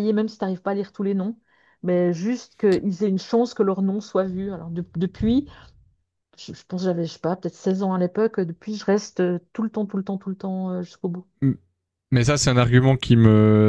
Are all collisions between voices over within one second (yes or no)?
yes